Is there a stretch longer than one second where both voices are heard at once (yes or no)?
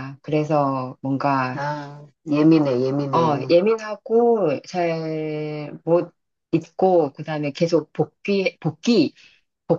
no